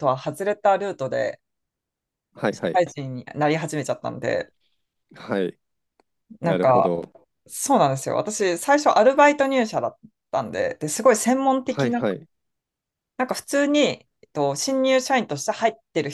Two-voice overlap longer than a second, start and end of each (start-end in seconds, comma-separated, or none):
none